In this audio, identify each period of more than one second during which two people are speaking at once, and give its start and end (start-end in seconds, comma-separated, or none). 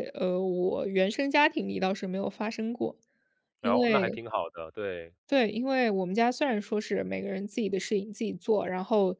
none